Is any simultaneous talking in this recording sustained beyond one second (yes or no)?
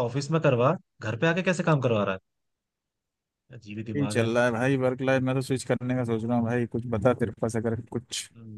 no